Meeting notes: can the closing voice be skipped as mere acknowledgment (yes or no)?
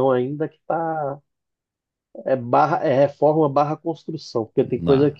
yes